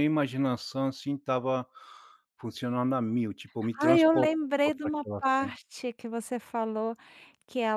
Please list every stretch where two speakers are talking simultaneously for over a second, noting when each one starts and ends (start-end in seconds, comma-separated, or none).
3.8-5.5